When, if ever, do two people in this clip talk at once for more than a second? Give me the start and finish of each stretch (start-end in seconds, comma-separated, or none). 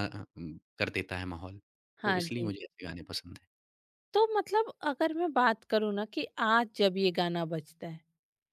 none